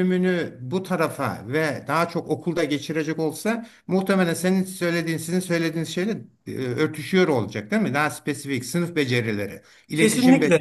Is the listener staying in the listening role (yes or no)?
no